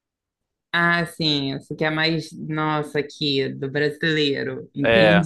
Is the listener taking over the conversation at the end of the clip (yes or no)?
yes